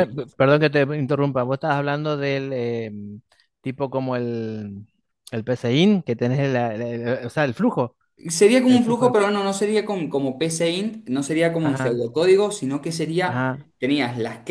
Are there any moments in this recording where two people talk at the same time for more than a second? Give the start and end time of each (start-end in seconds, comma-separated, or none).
none